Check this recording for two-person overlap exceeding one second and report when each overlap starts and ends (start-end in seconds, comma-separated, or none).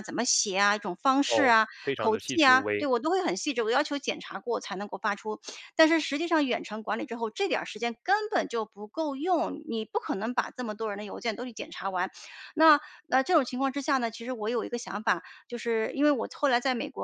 1.2-2.9